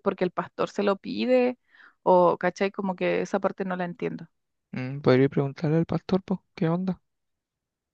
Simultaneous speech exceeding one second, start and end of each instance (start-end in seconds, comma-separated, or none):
none